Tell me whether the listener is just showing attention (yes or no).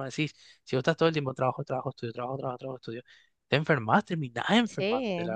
no